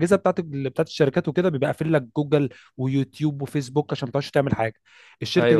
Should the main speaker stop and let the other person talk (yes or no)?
no